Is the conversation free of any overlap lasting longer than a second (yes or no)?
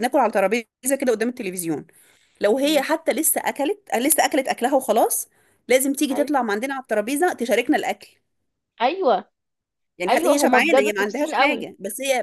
no